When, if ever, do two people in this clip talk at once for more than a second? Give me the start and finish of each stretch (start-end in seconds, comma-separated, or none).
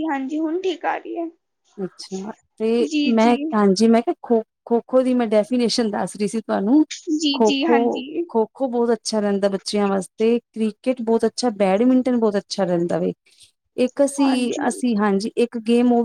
none